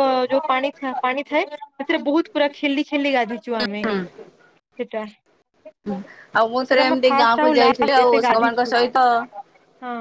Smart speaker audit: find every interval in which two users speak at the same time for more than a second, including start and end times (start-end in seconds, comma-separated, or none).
6.6-8.7